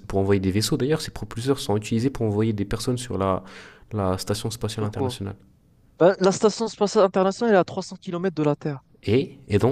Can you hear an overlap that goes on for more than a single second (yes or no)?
no